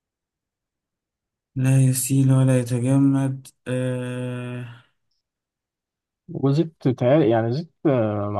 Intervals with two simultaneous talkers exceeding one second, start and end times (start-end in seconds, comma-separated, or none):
none